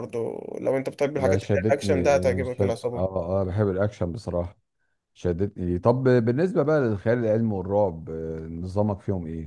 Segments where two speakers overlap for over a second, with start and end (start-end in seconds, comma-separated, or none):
1.2-3.0